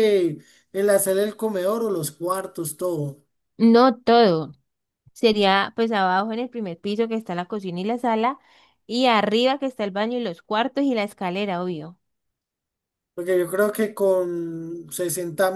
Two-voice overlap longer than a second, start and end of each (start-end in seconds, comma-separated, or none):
none